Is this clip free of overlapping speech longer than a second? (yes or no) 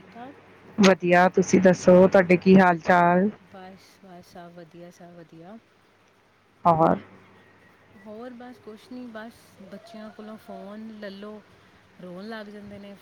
yes